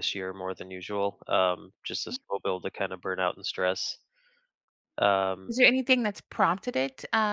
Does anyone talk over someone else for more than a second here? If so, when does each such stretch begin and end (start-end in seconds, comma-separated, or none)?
none